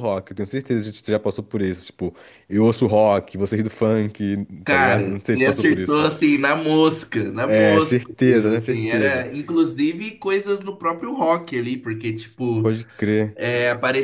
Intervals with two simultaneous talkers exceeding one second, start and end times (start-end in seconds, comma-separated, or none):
4.7-6.1, 7.4-9.2